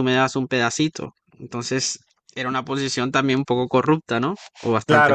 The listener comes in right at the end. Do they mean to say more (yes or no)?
yes